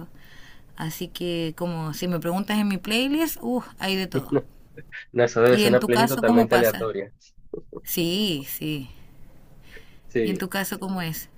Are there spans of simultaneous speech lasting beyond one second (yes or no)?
yes